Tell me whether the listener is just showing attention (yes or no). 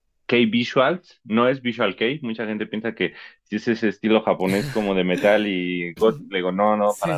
yes